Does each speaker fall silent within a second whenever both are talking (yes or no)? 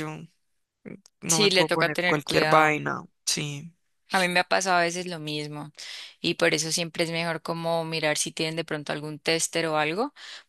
no